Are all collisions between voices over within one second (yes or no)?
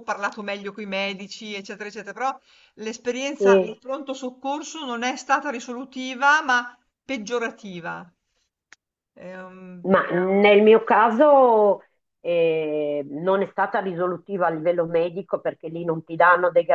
yes